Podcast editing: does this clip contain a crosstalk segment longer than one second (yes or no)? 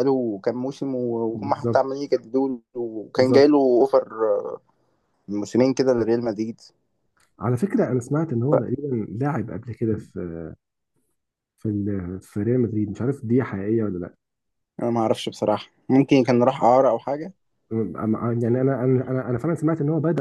no